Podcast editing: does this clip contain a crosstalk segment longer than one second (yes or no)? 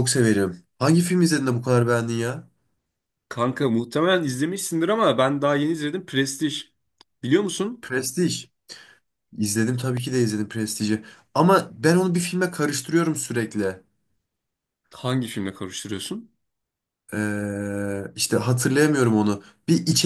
no